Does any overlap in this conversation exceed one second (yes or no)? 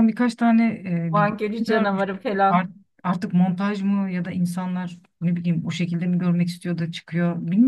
yes